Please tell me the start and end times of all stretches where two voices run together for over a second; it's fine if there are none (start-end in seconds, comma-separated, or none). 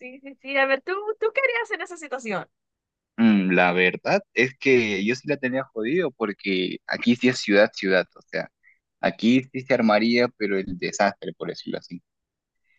none